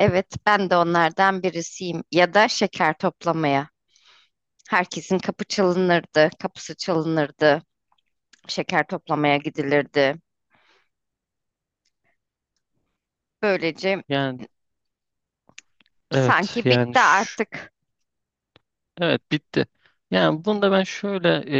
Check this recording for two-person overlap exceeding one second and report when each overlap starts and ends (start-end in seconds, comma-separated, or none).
16.1-17.4